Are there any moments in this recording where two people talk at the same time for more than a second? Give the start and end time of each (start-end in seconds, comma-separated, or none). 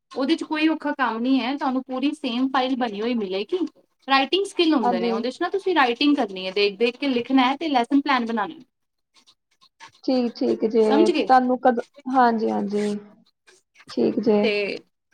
none